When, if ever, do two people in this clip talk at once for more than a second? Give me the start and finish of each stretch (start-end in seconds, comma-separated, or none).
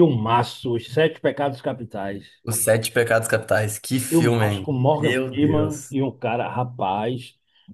4.1-6.0